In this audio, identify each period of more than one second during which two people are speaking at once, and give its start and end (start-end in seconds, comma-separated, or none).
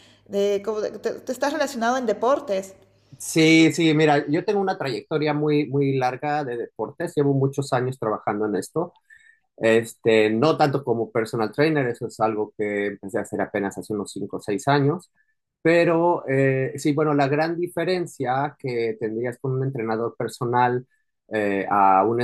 none